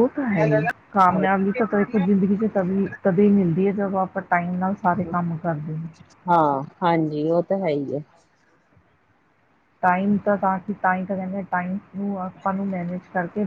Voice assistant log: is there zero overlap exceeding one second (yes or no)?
yes